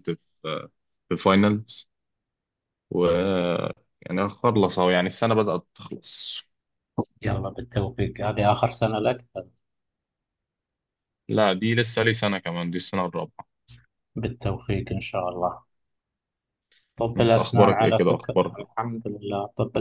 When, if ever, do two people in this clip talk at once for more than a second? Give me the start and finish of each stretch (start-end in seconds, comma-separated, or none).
17.2-18.6